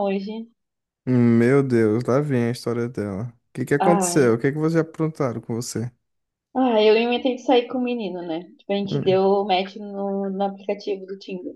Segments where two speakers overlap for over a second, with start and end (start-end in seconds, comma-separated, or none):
none